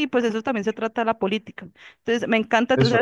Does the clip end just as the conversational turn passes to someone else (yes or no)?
no